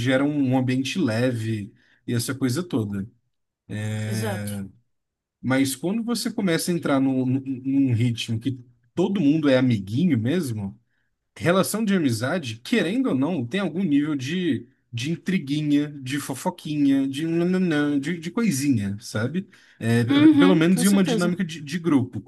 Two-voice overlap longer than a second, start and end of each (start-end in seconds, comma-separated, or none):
20.1-21.4